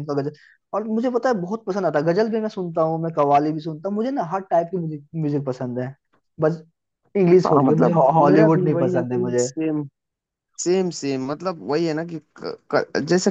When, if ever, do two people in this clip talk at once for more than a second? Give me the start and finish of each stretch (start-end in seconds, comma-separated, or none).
7.4-9.5